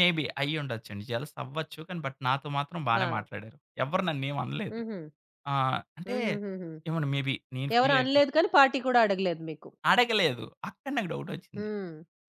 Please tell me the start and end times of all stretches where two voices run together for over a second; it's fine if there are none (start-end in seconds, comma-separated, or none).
none